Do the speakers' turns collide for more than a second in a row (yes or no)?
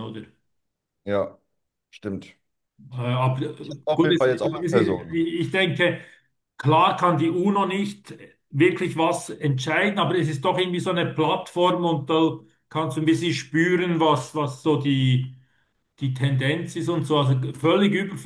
yes